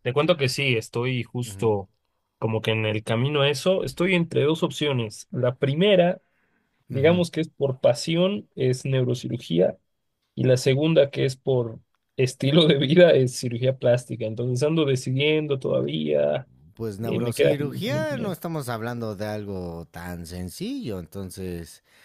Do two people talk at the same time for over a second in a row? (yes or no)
yes